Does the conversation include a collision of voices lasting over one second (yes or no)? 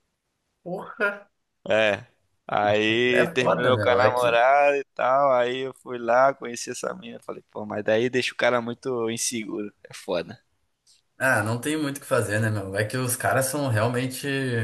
yes